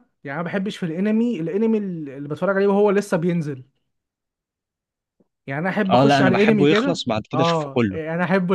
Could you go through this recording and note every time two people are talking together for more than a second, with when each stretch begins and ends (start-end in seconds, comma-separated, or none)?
5.9-8.0